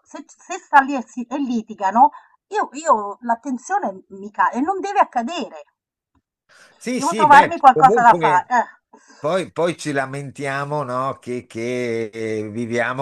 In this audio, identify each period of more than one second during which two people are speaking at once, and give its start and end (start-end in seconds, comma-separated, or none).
7.0-8.5